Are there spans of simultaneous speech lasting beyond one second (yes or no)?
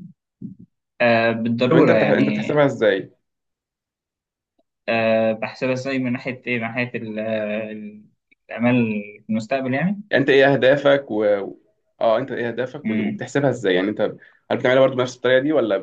no